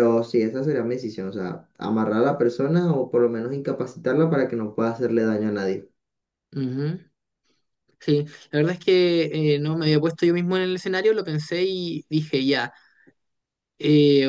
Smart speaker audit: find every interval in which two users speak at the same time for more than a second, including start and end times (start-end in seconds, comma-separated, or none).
none